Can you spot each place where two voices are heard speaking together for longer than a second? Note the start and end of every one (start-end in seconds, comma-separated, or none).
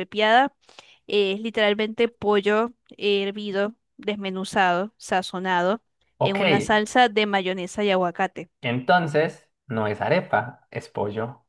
none